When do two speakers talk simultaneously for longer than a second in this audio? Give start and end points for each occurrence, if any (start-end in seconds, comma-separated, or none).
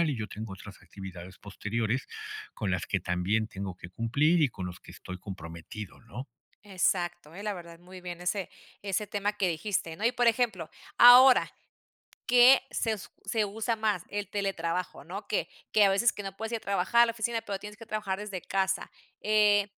none